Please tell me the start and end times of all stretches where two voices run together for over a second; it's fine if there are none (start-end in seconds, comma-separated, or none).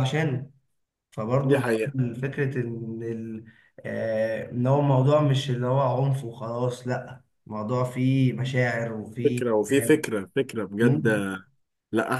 none